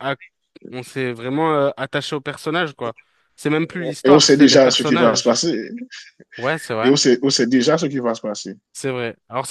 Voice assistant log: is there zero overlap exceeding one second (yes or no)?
no